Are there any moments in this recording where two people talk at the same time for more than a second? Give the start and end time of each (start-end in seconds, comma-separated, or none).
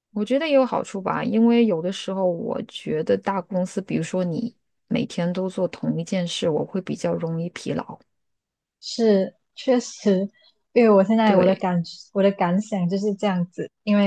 none